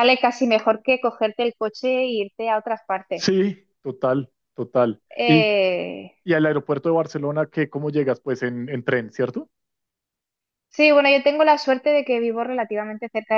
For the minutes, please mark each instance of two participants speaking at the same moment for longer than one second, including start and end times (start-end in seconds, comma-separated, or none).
none